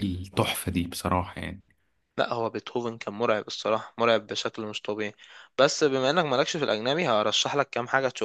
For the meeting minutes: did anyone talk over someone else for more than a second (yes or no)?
no